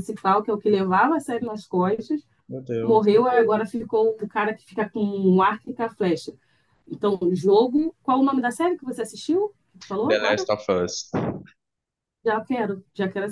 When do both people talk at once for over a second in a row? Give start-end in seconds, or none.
none